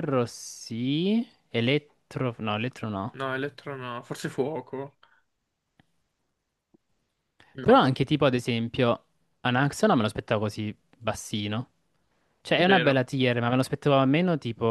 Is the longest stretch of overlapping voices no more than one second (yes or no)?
yes